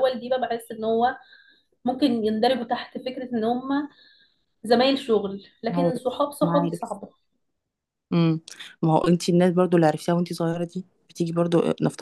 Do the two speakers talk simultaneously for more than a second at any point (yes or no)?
yes